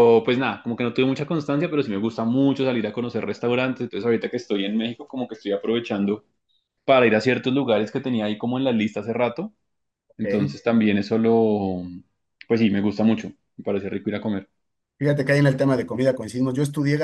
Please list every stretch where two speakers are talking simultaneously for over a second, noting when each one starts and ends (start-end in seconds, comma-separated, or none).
none